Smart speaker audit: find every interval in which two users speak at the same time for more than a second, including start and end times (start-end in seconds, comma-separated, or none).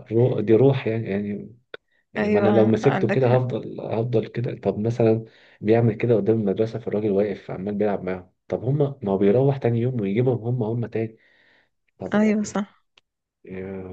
2.2-3.4